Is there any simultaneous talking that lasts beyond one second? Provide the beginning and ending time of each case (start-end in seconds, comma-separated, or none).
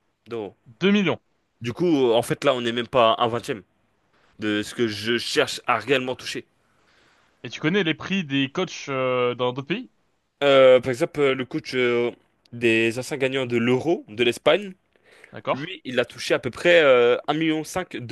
none